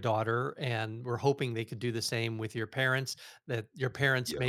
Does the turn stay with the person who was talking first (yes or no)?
yes